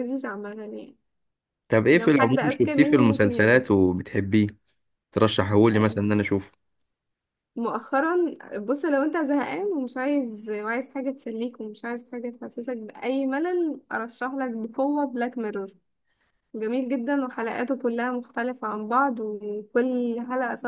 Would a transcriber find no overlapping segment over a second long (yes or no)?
no